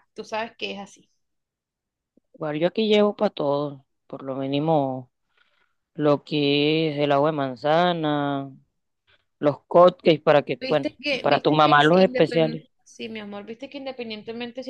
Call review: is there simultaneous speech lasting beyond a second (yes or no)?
yes